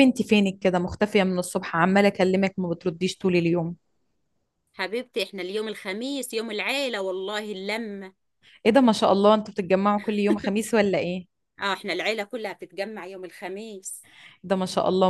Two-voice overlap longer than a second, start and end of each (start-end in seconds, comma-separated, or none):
none